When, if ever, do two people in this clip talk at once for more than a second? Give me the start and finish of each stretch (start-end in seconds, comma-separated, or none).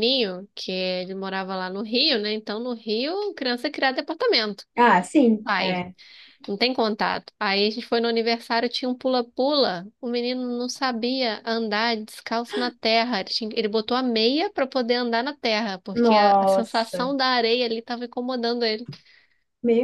15.9-17.1